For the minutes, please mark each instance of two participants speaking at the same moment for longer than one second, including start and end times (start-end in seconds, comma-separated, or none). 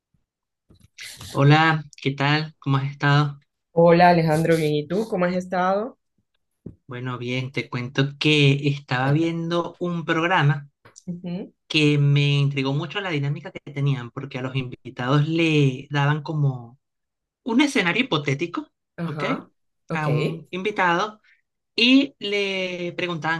none